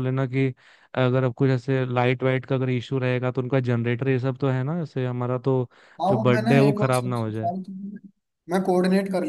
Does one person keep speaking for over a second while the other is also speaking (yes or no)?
yes